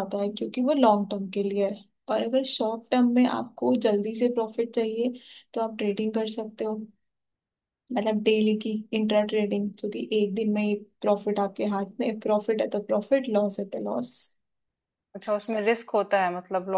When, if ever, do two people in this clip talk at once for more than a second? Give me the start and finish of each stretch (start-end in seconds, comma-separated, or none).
none